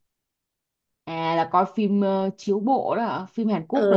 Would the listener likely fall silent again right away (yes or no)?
no